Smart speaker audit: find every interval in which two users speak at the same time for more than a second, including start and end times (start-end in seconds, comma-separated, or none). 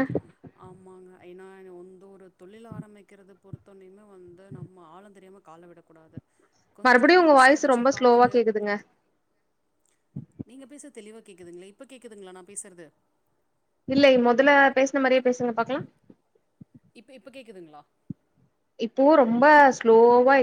6.8-8.3